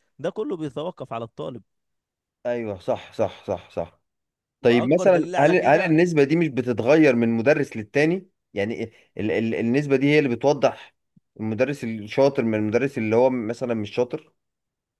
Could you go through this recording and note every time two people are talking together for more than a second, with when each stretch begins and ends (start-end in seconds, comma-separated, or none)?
4.6-5.9